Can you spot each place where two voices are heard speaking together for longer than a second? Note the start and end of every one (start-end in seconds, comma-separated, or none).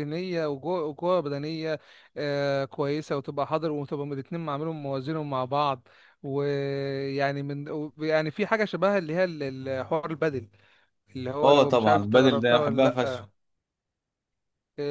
11.4-13.3